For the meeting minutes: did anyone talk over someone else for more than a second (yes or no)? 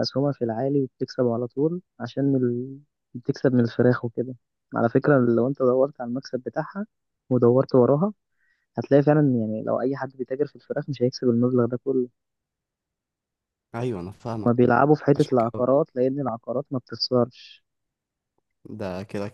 no